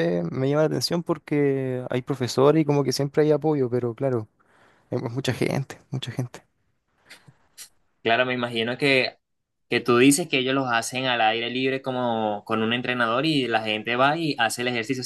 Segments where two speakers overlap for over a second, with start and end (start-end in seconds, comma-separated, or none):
none